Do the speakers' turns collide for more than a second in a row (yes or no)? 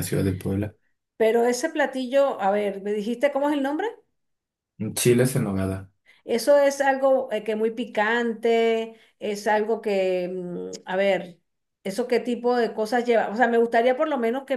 no